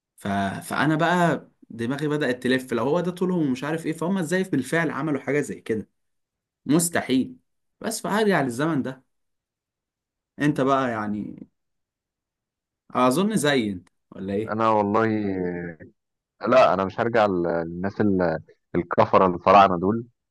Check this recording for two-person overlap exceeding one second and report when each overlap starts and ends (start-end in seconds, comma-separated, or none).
none